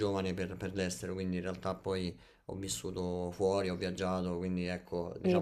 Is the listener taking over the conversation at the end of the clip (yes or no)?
yes